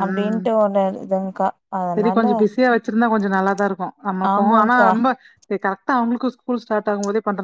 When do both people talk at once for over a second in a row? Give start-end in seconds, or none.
none